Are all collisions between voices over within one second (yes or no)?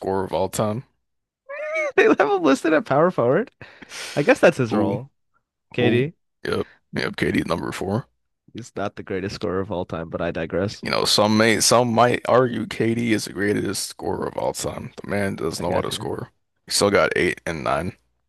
yes